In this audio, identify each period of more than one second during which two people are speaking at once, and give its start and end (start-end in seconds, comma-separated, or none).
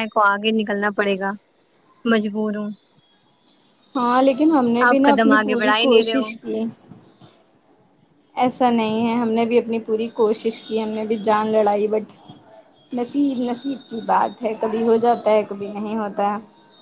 4.9-6.3